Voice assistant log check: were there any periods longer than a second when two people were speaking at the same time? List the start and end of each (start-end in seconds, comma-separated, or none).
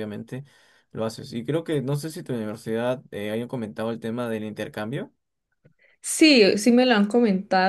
none